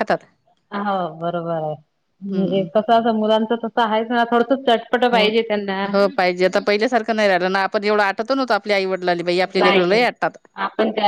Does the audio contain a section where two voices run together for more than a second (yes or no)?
no